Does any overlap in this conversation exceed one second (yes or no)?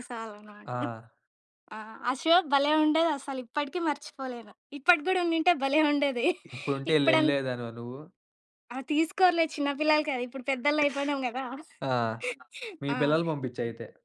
no